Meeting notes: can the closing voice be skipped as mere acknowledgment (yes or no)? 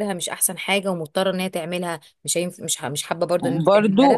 no